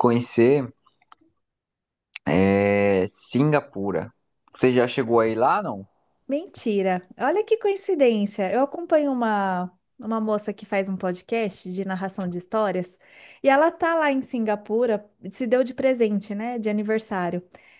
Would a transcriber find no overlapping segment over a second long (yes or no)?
yes